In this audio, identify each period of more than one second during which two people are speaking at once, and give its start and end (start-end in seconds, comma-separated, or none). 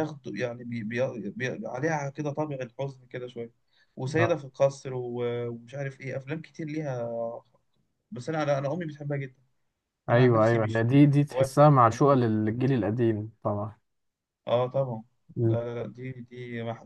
10.1-12.3